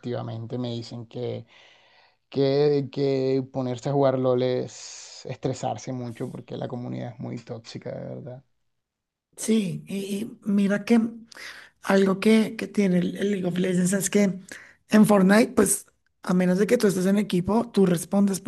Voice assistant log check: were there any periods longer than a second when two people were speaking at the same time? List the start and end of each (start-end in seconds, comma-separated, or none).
none